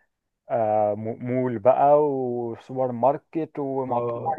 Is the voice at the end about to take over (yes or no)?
yes